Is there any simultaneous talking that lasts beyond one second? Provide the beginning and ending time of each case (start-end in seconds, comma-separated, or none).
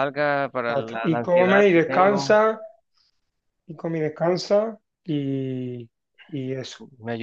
0.7-2.4